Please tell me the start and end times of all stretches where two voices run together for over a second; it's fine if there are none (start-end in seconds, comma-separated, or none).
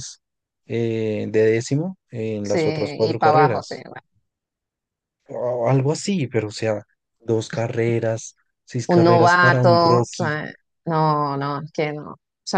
2.4-3.7, 8.9-10.3